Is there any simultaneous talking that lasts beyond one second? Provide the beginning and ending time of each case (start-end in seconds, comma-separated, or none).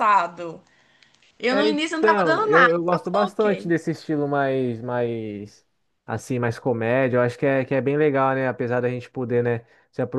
1.5-3.7